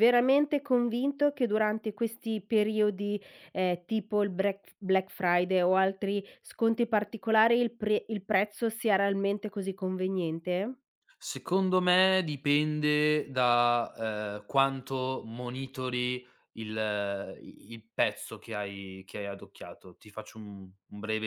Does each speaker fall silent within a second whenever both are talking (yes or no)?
yes